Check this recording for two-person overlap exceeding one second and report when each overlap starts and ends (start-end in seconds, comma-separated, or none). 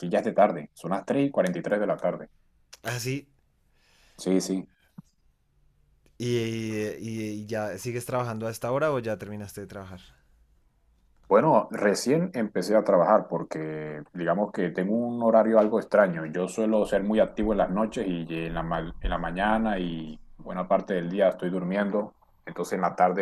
none